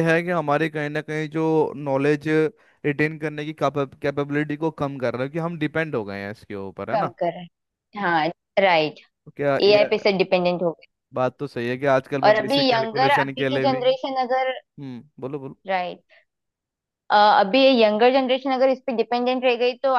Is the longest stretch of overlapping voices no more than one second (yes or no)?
no